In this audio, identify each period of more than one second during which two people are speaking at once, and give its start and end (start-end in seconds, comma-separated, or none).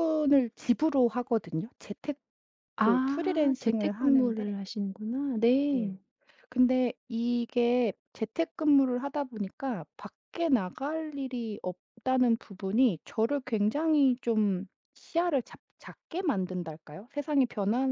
3.0-4.4